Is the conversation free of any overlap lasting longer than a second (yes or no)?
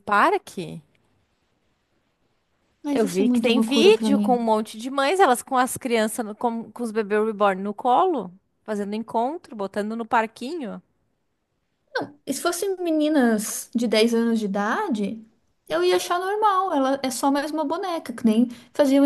no